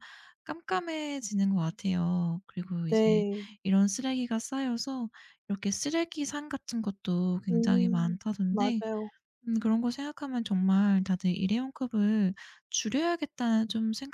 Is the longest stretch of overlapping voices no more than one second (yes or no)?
no